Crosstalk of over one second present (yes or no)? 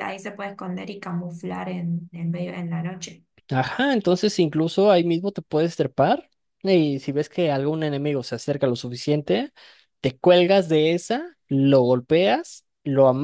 no